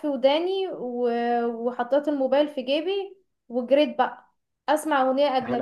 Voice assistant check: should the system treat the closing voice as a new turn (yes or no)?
no